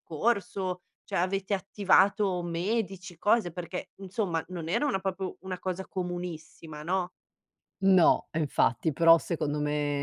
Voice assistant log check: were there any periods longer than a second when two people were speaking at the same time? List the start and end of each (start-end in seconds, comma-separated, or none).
none